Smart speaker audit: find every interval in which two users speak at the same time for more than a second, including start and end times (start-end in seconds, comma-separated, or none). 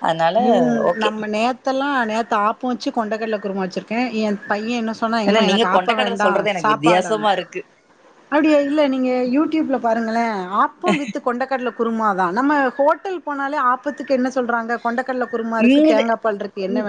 5.3-7.1